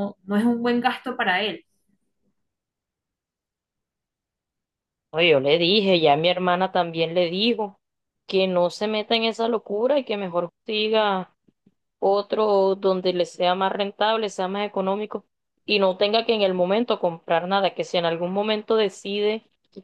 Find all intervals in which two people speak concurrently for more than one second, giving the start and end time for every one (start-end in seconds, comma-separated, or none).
none